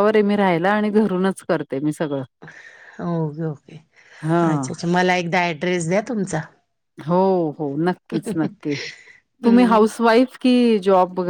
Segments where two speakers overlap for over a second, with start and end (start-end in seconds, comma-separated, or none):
none